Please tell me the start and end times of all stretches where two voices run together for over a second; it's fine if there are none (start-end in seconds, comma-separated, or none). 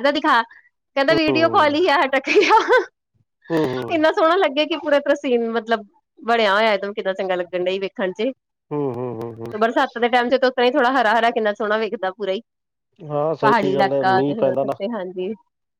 13.4-14.7